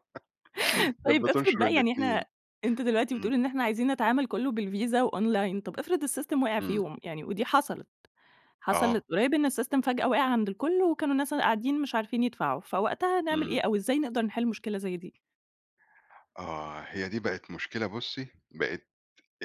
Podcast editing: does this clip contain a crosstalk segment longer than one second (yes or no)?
yes